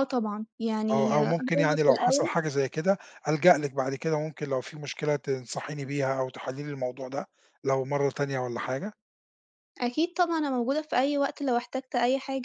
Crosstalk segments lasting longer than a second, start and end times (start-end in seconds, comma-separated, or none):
0.9-2.3